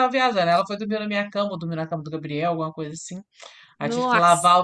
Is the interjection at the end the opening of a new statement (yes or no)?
no